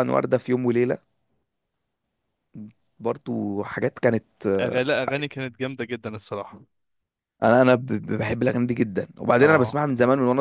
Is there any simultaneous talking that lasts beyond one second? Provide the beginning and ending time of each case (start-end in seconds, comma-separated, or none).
none